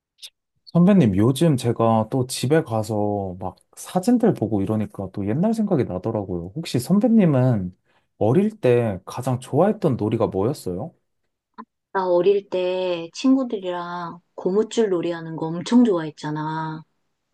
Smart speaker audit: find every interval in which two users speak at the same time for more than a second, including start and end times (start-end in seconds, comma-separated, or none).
none